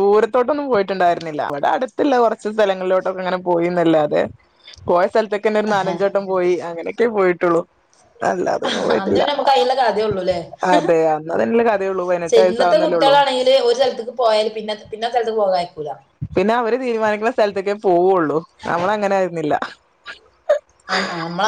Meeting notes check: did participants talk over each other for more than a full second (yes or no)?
no